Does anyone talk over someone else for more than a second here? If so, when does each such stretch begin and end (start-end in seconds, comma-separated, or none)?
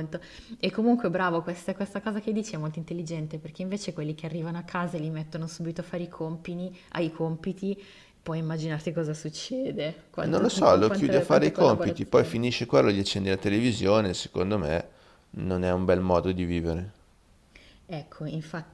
10.2-12.6